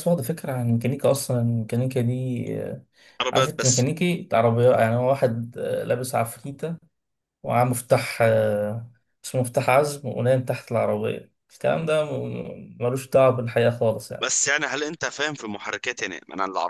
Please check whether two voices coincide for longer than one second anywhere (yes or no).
no